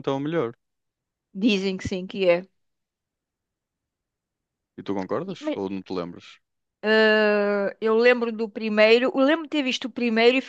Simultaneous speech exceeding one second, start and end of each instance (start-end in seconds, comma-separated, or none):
none